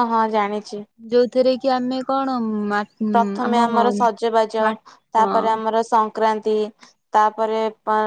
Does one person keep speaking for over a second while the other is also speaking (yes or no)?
no